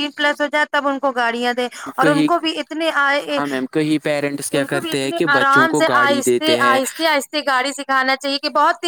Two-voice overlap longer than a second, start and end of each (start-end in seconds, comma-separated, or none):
4.6-6.8